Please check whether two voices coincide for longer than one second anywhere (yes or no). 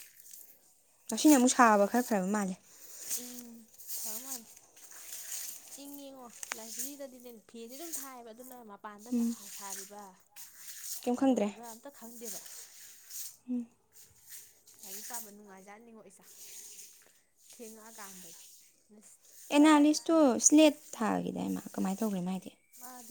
no